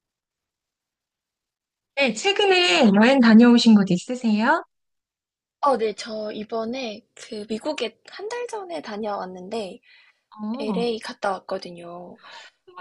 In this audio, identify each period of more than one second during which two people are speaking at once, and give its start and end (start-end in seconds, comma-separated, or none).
none